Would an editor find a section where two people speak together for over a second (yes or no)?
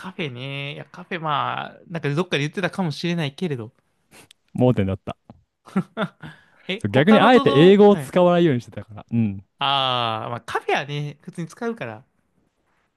yes